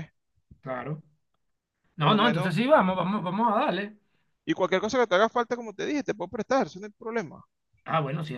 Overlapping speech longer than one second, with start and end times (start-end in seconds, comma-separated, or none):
none